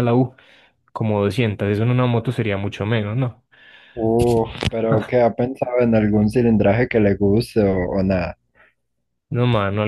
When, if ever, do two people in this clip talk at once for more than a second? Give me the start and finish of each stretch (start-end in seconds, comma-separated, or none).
none